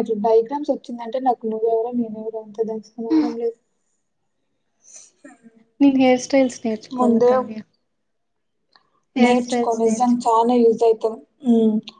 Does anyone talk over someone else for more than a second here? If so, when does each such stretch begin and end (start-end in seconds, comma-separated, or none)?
9.2-10.5